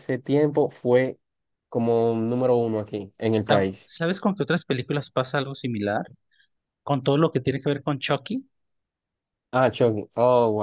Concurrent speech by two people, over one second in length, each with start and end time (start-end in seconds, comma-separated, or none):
none